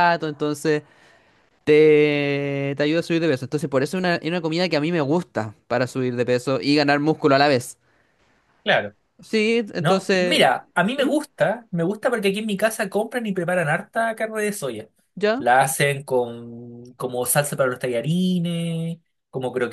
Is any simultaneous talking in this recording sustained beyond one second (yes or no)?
no